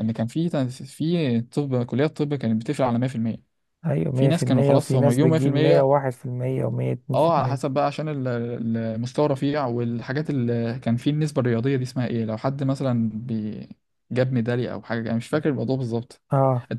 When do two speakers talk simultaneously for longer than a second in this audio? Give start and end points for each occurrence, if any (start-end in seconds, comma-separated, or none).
4.1-5.9